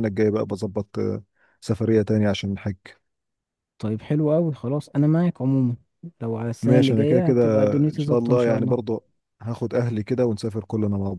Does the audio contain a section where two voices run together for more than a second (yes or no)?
yes